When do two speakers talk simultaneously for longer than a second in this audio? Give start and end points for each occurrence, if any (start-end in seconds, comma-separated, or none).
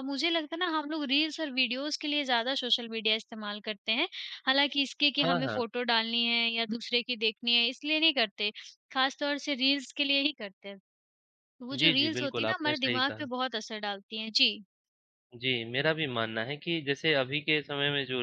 11.8-13.2